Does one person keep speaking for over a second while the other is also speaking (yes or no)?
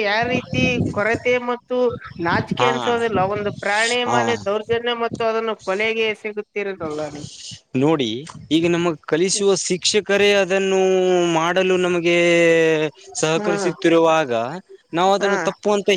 no